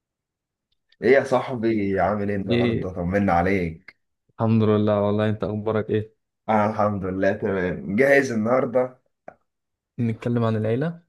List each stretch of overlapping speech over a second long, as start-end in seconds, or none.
none